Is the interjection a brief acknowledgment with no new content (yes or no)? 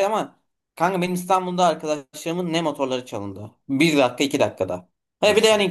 yes